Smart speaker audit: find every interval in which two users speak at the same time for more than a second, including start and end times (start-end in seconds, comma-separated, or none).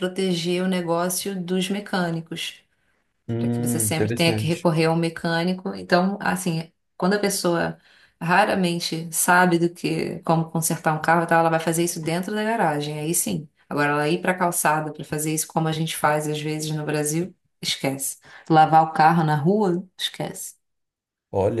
3.4-4.7